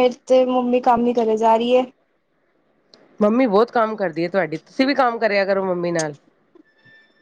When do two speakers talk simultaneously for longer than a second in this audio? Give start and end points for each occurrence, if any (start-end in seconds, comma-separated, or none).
none